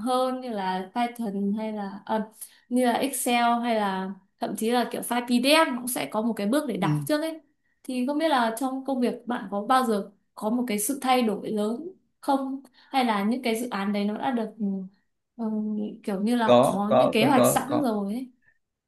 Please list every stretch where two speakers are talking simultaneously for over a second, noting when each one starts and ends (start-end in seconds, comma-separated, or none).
16.4-17.9